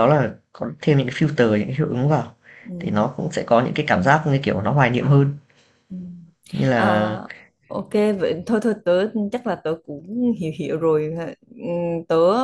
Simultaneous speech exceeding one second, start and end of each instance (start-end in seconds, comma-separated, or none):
none